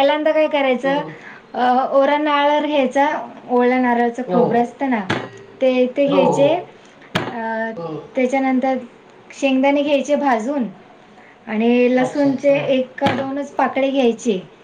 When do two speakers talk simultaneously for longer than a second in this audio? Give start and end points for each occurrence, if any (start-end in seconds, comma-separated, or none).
none